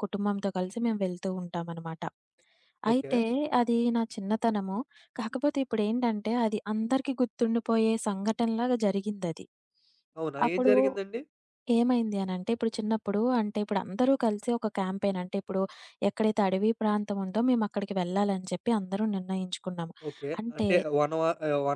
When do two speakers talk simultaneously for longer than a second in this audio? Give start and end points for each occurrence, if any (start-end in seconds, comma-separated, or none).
none